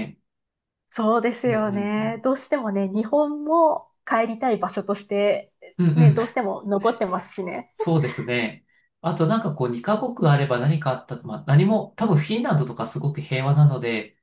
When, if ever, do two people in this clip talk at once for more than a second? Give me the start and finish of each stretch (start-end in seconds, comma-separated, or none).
none